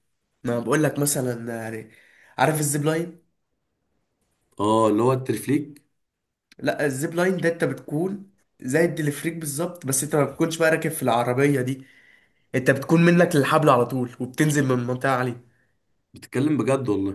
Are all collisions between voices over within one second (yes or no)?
yes